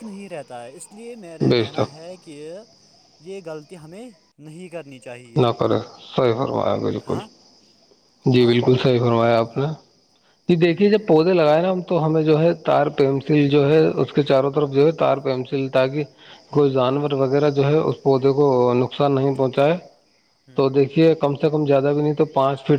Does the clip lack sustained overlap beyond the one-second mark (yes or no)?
yes